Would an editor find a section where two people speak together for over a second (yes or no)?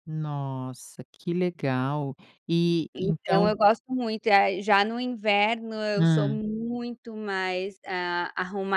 no